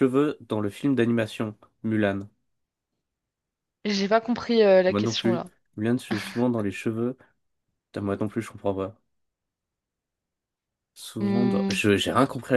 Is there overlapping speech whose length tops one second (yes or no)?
no